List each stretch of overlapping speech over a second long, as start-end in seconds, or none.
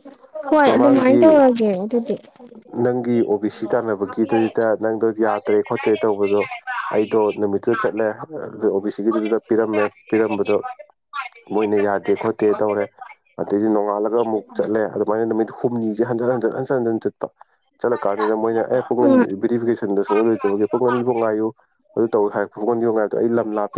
none